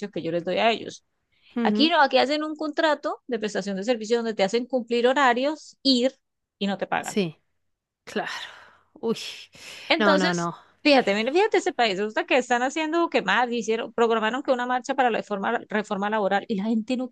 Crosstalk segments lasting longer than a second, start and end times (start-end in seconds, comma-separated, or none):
none